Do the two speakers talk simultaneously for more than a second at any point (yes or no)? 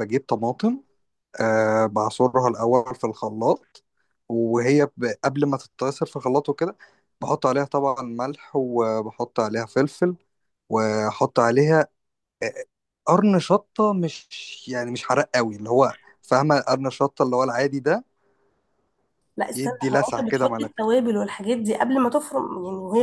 yes